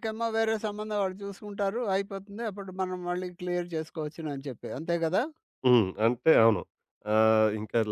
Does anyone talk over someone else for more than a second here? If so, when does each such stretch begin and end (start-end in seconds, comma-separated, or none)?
none